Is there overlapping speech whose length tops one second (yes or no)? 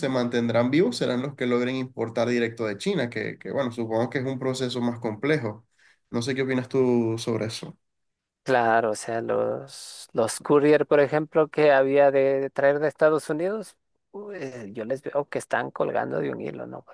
no